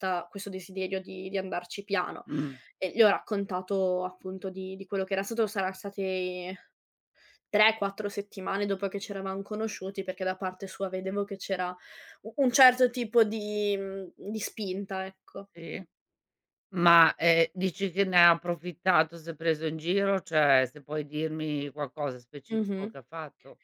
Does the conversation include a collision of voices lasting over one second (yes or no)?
no